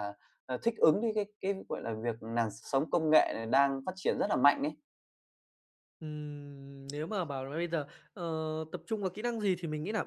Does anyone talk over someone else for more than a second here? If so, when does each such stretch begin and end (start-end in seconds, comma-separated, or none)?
none